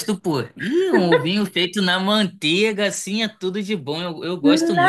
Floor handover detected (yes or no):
yes